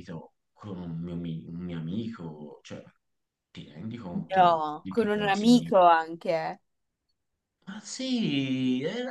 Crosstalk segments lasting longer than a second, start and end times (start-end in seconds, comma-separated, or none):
4.3-5.8